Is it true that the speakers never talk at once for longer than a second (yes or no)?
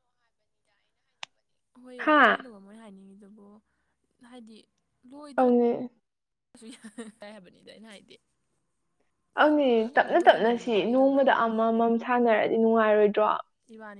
no